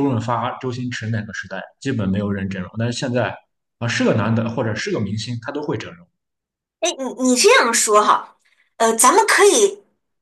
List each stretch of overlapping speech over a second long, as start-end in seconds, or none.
none